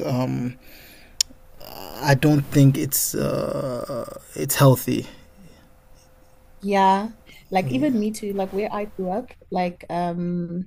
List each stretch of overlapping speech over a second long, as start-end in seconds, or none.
none